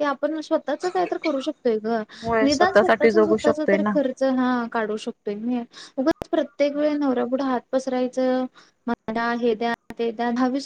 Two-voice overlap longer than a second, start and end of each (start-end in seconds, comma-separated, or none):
2.5-4.0